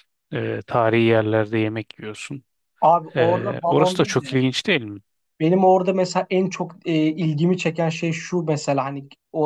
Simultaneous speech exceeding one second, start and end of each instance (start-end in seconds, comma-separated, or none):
3.2-4.4